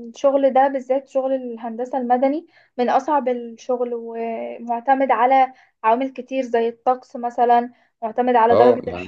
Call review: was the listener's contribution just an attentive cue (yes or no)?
yes